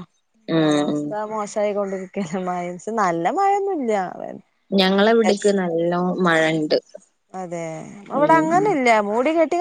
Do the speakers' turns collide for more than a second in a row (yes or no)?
no